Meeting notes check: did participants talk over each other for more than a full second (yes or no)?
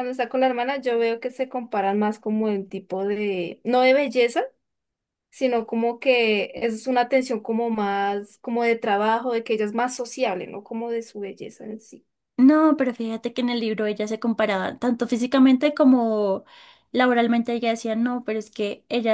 no